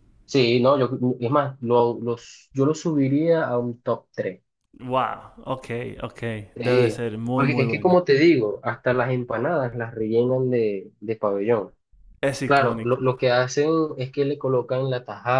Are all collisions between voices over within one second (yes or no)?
no